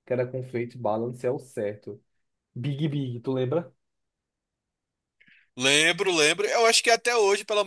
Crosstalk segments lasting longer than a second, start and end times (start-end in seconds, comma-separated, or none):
none